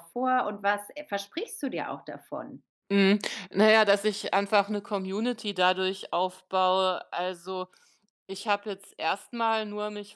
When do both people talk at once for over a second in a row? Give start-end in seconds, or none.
none